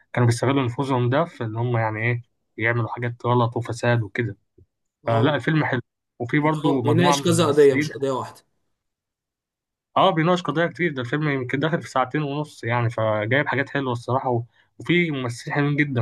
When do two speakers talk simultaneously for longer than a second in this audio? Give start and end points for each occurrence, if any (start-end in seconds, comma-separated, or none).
6.4-7.9